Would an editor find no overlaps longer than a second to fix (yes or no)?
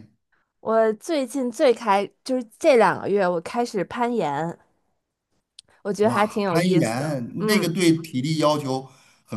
no